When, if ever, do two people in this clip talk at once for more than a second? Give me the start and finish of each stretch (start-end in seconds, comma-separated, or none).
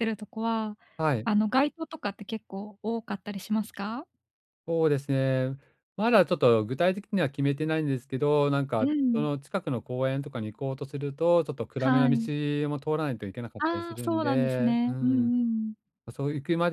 13.6-15.3